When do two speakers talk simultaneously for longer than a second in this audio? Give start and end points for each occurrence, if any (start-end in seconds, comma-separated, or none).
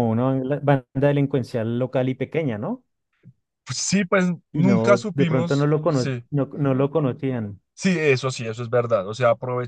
4.5-6.2